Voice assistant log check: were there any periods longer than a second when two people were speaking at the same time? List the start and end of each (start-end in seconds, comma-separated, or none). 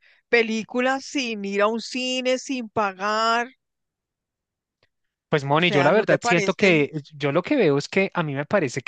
5.6-6.8